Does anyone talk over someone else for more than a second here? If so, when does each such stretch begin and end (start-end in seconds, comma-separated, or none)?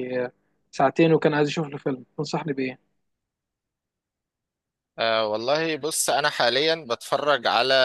none